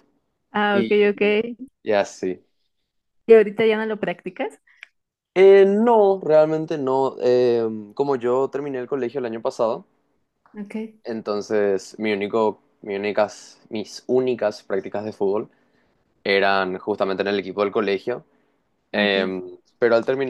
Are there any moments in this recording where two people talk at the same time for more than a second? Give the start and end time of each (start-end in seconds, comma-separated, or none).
none